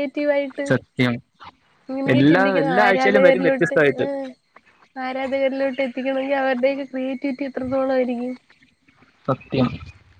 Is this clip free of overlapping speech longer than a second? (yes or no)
no